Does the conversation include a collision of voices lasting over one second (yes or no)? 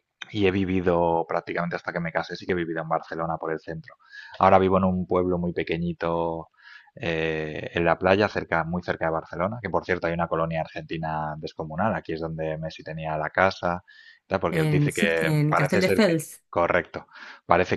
yes